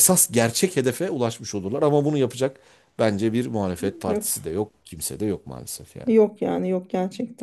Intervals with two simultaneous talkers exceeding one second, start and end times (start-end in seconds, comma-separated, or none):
none